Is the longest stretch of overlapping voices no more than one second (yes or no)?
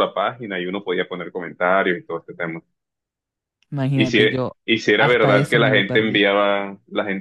no